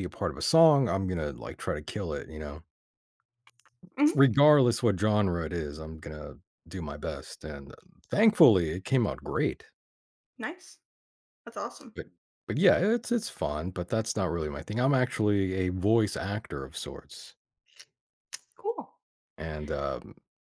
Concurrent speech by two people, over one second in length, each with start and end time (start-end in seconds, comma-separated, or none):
none